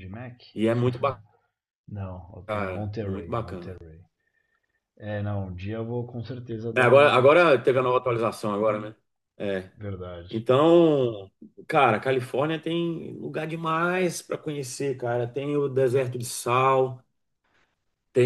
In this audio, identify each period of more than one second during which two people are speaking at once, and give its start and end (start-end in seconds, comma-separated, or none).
2.5-3.8